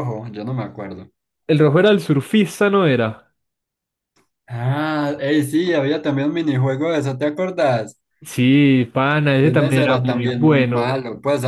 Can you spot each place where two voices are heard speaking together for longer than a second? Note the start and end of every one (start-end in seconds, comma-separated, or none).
9.4-11.0